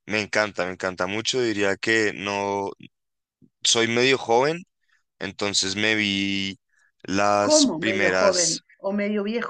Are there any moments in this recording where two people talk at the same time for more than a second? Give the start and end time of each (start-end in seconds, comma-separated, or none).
7.4-8.6